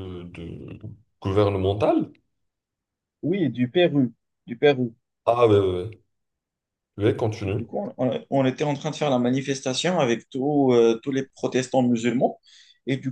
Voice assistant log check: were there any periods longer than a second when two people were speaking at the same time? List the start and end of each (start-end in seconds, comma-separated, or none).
none